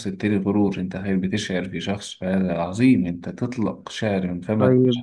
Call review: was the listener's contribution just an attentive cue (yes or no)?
no